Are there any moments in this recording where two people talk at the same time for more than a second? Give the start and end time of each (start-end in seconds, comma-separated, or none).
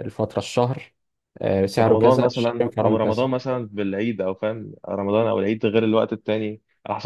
1.8-3.2